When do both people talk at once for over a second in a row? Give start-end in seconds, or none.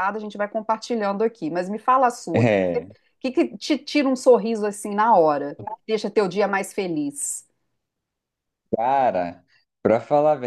none